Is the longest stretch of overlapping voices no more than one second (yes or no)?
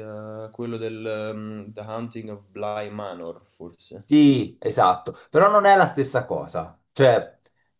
yes